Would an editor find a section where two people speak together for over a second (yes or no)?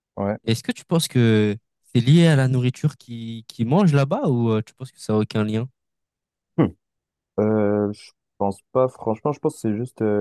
no